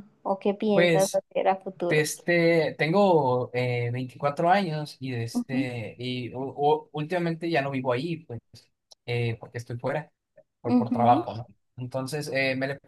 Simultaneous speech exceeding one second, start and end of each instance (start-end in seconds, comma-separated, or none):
none